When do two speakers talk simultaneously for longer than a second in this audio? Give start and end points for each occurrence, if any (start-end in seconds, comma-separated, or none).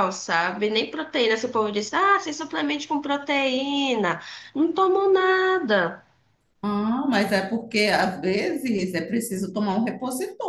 none